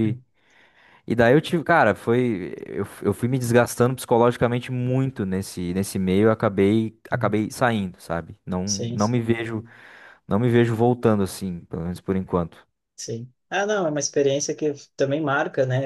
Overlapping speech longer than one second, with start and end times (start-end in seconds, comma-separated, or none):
none